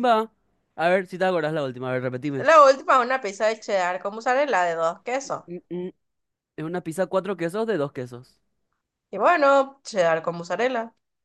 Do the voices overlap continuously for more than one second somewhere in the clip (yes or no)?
no